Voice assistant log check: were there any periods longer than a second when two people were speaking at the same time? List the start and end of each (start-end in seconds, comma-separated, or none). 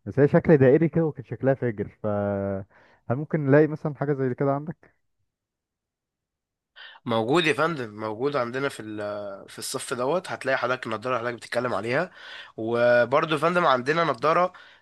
none